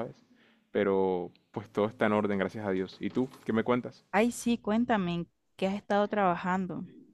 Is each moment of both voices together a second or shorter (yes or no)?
yes